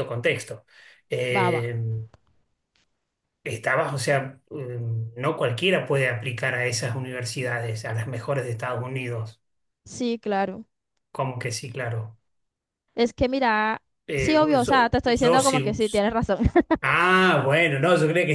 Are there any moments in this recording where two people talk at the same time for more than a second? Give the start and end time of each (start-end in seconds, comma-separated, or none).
14.1-15.8